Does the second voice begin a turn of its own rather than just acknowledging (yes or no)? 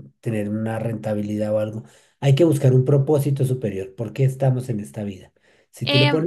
no